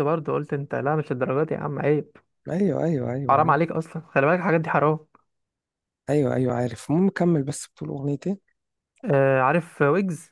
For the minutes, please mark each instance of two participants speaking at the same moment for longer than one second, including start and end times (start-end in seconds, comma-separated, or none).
none